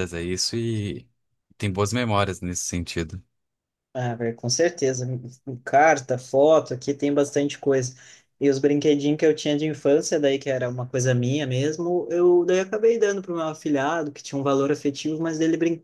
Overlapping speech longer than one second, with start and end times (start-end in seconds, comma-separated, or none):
none